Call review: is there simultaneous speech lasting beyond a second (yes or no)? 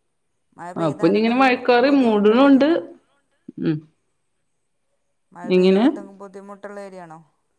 yes